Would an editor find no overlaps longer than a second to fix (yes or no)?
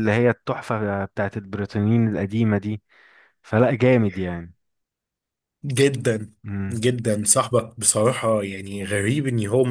yes